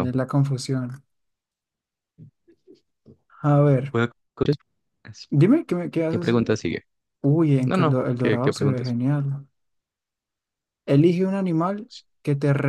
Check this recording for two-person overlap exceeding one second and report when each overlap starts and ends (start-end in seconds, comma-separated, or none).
7.7-9.0